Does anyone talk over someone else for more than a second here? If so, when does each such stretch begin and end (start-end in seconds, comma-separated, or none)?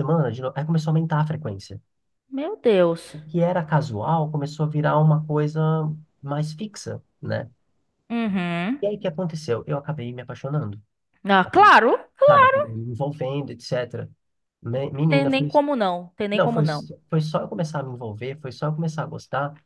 none